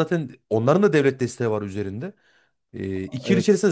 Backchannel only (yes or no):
yes